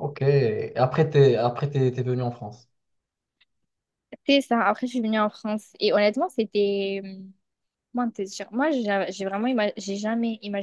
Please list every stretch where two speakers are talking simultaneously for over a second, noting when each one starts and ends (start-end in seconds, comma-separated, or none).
none